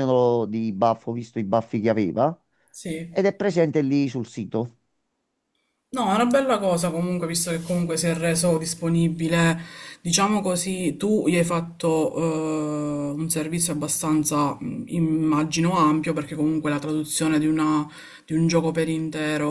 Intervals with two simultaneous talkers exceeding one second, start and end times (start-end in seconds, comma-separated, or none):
none